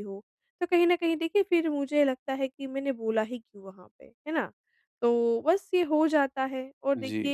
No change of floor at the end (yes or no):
yes